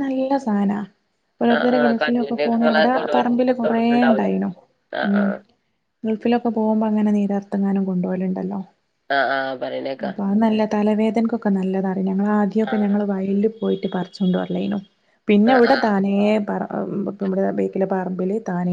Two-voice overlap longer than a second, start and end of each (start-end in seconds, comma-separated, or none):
1.6-4.3